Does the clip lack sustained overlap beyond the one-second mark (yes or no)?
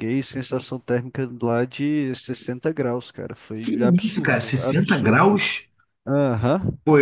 no